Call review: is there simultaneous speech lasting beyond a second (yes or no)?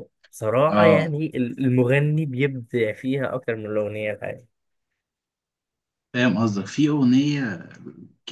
no